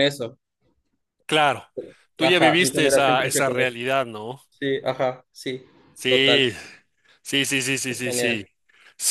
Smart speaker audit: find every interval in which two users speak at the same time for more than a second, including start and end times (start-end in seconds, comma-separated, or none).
2.2-3.8